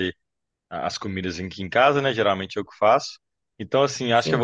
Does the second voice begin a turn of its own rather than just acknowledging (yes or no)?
no